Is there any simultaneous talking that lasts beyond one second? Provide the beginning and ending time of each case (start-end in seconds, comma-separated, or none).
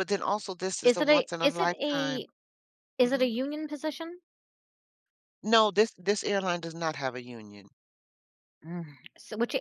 0.8-2.2